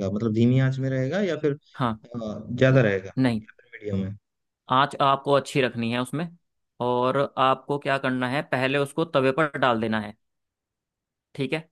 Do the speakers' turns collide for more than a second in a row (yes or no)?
no